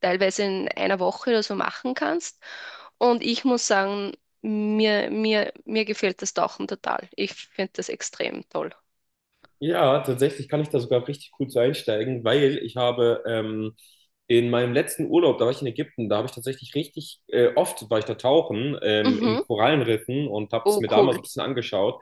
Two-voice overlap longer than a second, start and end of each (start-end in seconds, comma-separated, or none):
none